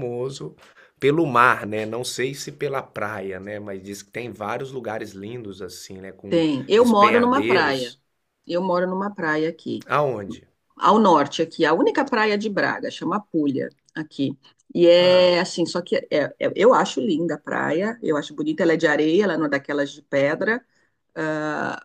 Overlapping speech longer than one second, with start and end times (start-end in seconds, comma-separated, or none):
6.3-8.0